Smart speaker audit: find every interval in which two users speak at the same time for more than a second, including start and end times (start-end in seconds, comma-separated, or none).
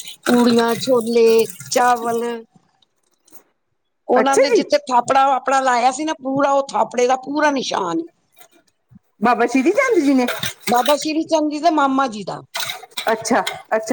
none